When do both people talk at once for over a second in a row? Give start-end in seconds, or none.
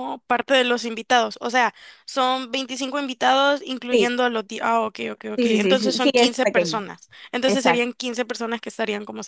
5.4-6.8